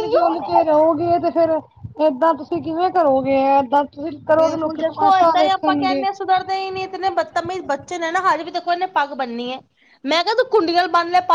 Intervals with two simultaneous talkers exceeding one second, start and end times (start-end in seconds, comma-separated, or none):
4.3-6.0